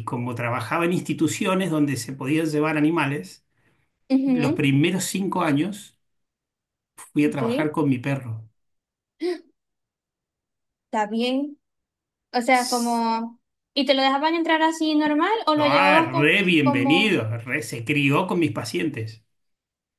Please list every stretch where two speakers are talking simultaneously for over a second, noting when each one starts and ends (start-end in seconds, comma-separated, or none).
15.6-17.2